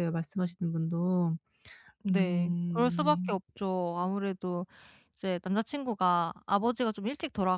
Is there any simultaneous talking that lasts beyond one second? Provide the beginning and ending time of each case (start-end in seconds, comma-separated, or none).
2.1-3.5